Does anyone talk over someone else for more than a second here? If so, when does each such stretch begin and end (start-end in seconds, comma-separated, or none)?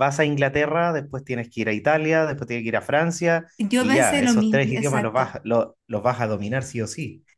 3.6-5.4